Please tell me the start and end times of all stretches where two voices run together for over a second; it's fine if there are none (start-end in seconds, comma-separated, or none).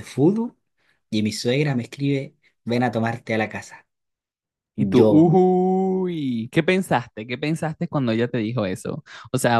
none